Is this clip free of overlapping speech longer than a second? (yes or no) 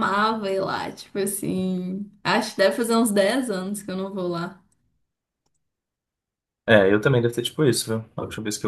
yes